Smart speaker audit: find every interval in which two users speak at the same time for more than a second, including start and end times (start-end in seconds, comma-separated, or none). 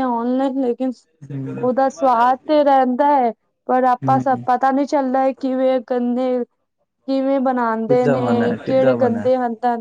7.9-9.3